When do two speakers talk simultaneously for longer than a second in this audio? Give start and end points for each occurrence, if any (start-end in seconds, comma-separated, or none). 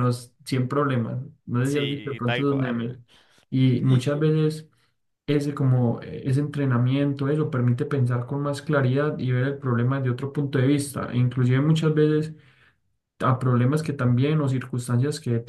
1.6-3.0